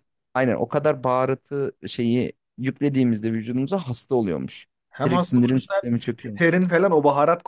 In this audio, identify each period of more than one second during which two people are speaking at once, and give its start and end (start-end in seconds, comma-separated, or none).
5.0-6.6